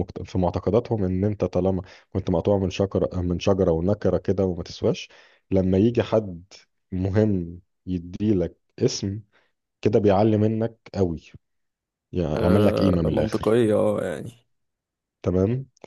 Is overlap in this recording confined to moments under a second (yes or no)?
no